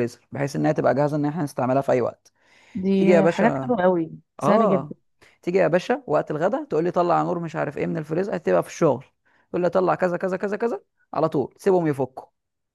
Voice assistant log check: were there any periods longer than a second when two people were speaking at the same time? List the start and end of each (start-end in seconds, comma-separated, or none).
none